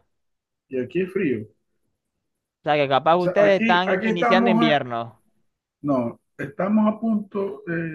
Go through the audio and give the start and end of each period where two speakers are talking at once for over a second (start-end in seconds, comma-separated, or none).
3.1-4.8